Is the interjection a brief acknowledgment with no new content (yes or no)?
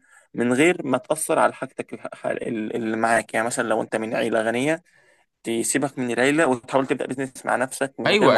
no